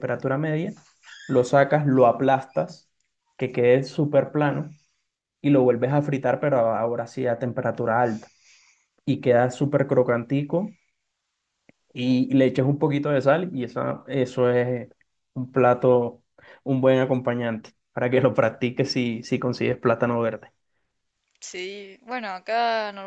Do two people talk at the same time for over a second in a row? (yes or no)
no